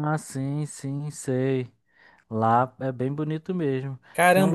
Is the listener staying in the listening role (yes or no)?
no